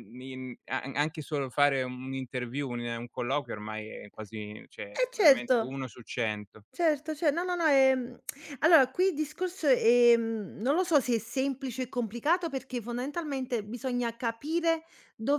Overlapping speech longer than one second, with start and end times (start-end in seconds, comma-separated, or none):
none